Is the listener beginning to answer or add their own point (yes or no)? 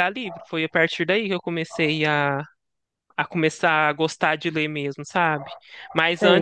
no